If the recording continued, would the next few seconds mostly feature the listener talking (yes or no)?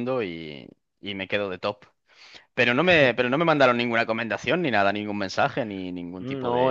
yes